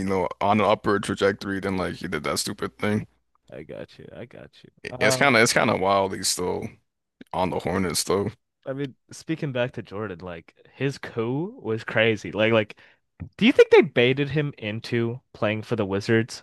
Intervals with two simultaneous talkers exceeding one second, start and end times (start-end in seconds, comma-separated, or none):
none